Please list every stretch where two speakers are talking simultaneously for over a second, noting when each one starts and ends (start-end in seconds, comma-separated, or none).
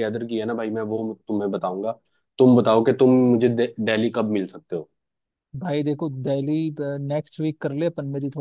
none